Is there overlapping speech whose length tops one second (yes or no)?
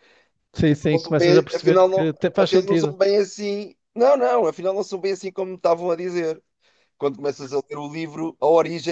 yes